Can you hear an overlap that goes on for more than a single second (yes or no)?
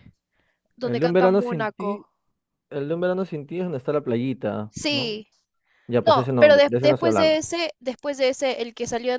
yes